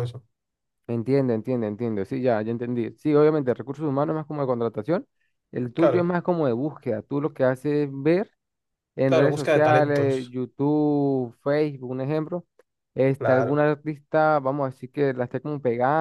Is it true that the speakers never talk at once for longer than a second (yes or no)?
no